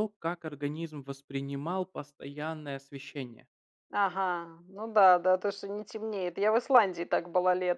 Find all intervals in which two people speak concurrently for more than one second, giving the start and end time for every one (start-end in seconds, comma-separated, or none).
none